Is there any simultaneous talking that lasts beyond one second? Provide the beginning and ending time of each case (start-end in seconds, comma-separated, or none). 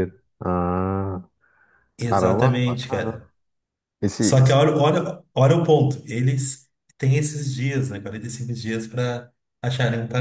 2.0-3.2